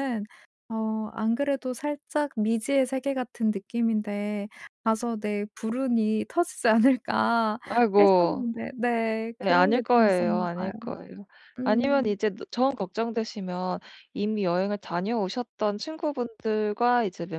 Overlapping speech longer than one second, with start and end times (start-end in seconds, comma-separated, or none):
9.4-10.7